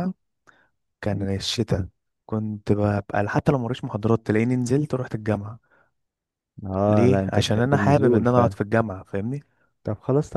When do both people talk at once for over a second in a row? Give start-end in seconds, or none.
6.9-8.6